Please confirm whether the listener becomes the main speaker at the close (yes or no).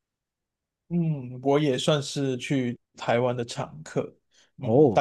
no